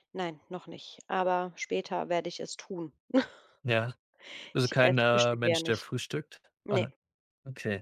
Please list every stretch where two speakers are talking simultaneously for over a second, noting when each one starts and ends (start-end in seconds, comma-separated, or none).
4.6-5.9